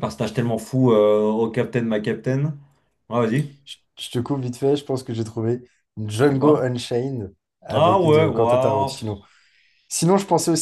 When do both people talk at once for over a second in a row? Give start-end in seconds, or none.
7.7-8.9